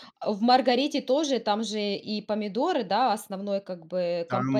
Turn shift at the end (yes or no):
yes